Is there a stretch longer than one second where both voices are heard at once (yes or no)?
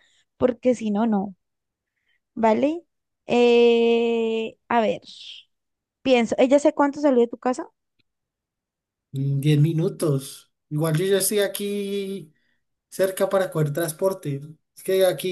no